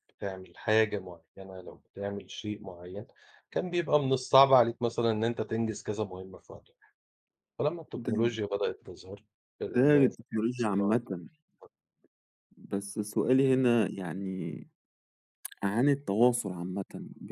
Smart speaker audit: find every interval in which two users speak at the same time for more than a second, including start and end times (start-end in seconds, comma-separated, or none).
none